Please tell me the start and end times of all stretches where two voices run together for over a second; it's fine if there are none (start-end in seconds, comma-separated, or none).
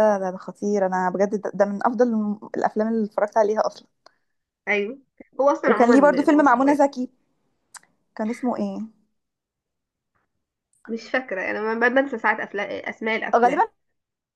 5.7-6.9